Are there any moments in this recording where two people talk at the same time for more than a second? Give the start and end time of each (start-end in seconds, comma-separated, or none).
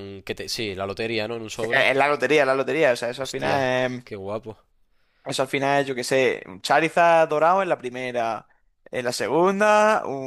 none